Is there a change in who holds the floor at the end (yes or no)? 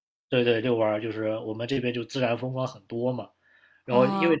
no